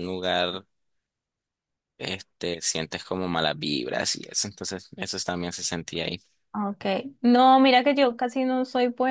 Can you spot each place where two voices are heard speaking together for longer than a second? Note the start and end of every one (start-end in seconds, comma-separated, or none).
none